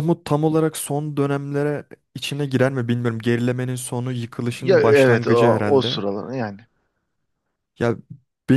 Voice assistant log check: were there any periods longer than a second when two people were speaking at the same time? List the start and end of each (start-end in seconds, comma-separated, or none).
4.6-6.0